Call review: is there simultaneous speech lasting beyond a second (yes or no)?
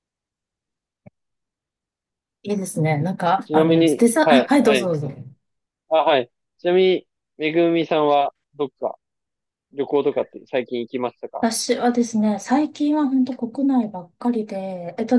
yes